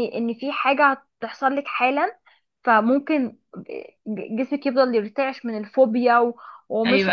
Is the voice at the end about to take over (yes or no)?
yes